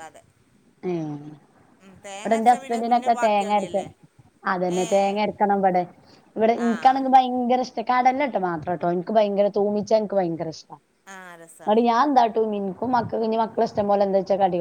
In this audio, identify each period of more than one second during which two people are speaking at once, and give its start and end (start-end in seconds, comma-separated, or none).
2.4-3.8